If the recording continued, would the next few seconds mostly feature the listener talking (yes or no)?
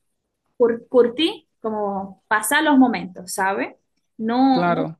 no